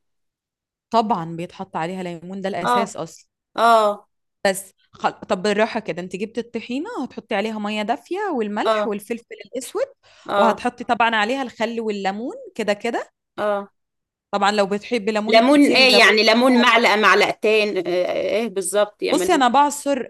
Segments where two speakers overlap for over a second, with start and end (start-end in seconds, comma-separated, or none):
15.3-16.9